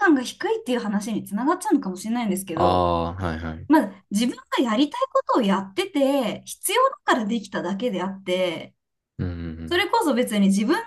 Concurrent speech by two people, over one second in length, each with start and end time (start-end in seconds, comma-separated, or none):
none